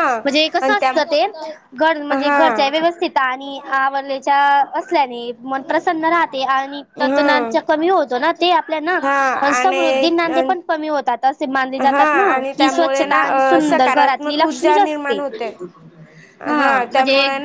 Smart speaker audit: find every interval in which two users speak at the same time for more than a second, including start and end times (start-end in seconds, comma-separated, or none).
11.9-15.2